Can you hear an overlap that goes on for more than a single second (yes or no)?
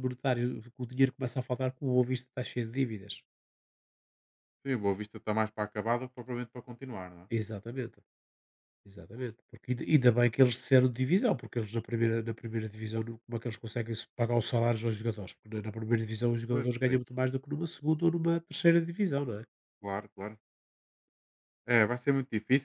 no